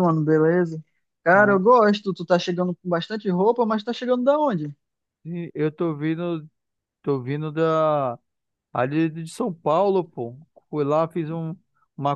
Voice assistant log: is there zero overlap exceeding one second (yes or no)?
yes